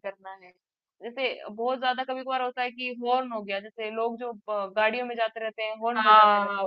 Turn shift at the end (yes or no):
yes